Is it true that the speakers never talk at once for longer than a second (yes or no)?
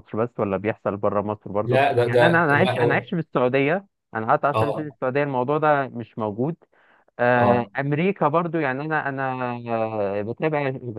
no